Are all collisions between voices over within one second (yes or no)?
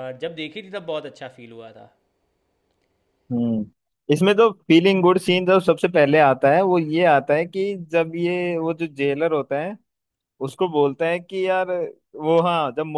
yes